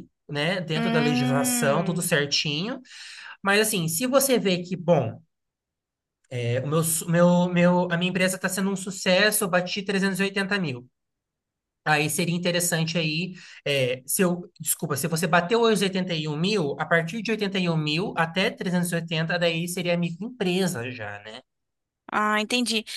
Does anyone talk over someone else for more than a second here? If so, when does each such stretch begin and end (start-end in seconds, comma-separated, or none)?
0.7-2.1